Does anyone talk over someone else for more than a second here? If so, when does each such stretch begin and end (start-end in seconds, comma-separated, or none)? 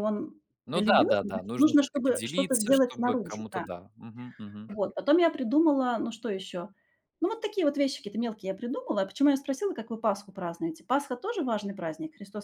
0.7-3.6